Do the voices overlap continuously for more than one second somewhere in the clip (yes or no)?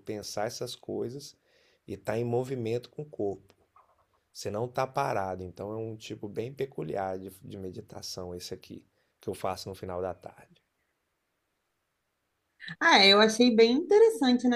no